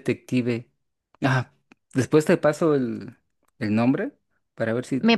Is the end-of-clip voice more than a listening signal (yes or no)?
yes